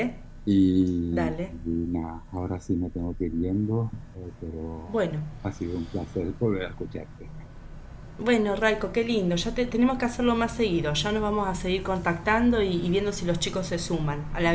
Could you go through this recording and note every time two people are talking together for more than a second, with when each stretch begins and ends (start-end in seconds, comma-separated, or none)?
none